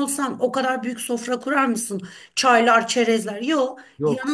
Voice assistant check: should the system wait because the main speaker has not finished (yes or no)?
yes